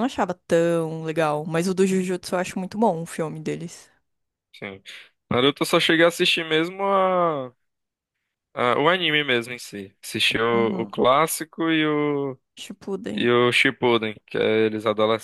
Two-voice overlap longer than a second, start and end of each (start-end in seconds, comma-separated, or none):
none